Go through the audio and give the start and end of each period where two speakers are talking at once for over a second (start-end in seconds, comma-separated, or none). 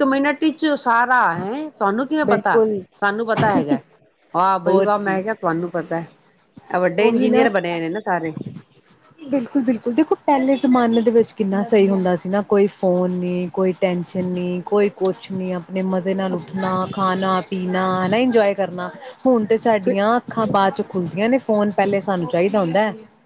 none